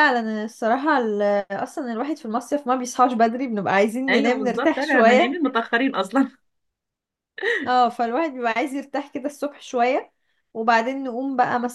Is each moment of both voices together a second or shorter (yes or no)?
no